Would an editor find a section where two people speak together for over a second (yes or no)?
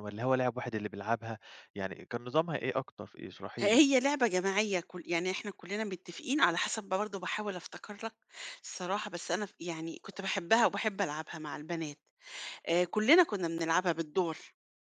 no